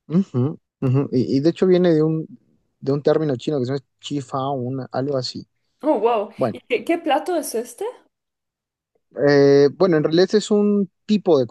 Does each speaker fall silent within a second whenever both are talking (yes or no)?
yes